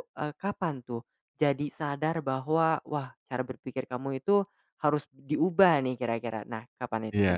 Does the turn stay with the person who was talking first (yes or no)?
no